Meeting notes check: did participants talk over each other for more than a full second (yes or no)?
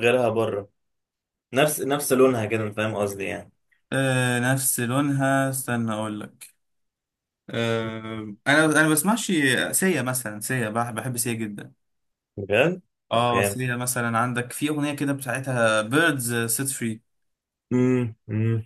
no